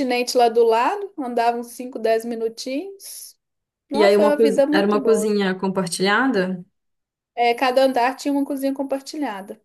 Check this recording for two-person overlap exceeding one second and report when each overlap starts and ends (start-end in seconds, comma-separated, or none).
3.9-5.3